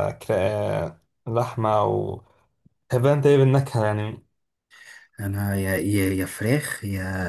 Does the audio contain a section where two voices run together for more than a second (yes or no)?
no